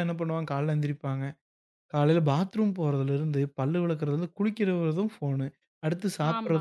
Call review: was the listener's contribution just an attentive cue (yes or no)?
yes